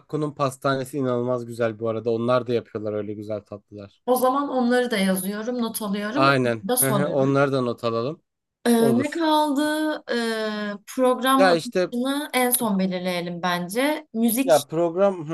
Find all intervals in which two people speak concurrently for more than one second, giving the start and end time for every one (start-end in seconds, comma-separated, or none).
6.1-7.3